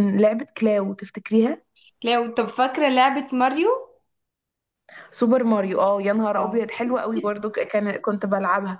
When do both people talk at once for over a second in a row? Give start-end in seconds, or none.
none